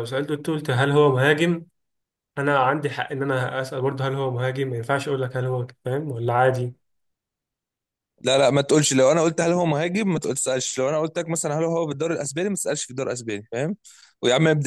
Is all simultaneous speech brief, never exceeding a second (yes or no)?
yes